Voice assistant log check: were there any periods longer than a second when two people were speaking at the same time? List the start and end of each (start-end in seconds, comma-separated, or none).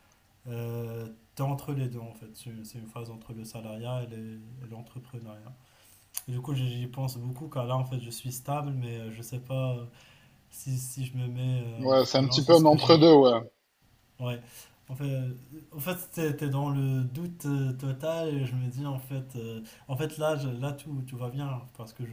11.8-13.1